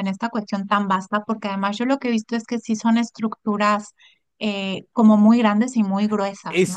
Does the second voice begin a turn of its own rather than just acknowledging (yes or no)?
yes